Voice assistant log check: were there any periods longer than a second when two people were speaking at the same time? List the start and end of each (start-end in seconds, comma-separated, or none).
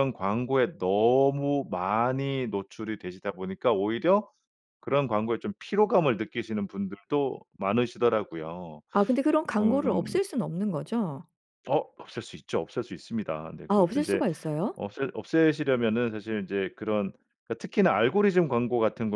none